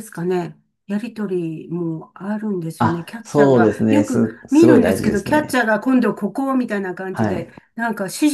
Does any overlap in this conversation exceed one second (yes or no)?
yes